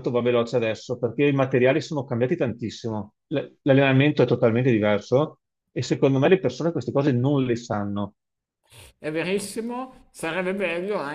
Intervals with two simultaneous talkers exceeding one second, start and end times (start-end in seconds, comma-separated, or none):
none